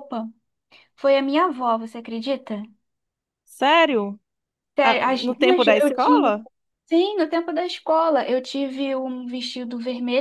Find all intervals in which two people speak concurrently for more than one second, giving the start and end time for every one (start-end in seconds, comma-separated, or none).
4.8-6.3